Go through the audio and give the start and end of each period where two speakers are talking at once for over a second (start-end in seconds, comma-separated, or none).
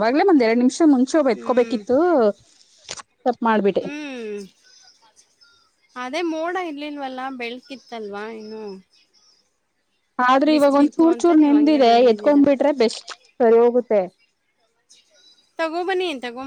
10.5-12.4